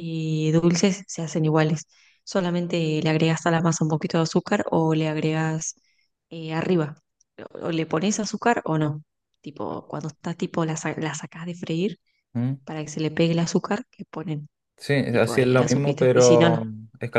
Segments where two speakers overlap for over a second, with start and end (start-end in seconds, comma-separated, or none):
15.1-16.6